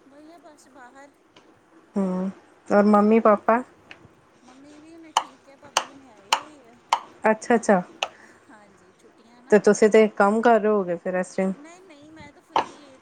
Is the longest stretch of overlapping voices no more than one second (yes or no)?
yes